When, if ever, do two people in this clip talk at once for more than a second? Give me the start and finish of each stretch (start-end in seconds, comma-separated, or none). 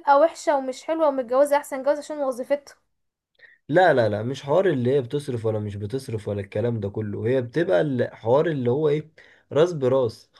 none